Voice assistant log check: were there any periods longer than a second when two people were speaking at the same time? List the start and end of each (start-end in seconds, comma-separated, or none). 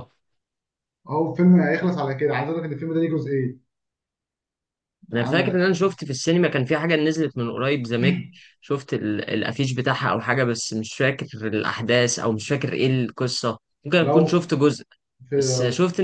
none